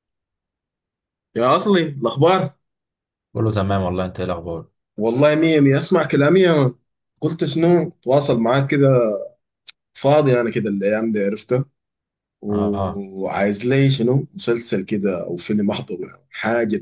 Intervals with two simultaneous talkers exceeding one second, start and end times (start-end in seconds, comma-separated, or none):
none